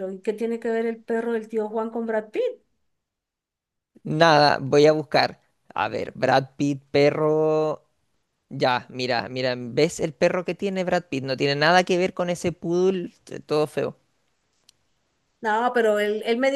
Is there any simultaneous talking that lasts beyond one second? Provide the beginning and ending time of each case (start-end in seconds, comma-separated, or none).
none